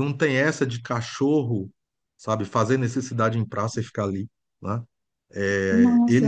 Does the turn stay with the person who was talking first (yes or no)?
yes